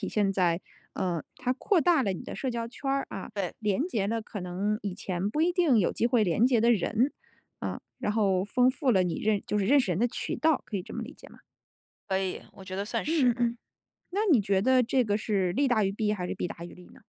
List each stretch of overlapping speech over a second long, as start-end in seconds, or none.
none